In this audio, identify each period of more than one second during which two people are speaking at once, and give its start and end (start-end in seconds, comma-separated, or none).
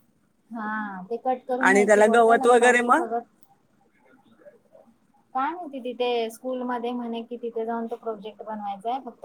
1.4-3.1